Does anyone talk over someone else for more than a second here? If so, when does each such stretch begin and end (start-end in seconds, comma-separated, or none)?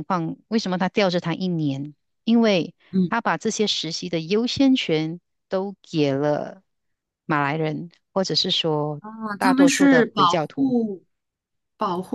9.4-10.8